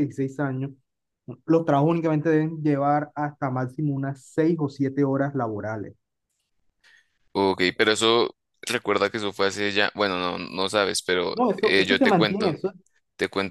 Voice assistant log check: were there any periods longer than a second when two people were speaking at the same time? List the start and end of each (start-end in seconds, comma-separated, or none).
11.3-12.6